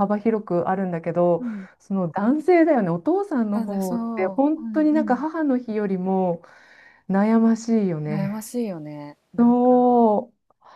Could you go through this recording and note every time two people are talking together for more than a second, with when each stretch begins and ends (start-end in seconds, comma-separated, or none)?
3.5-5.3